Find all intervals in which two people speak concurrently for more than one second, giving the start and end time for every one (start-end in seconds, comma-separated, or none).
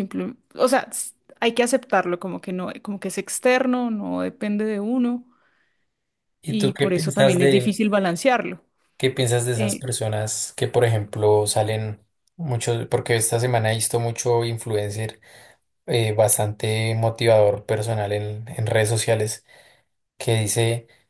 6.5-7.8